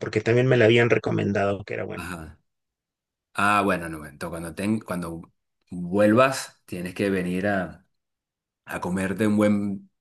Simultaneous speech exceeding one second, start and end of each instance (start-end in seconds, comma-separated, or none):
none